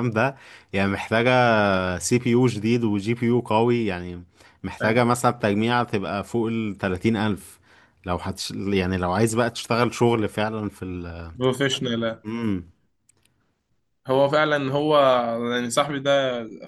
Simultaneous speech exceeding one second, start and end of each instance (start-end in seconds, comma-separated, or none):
none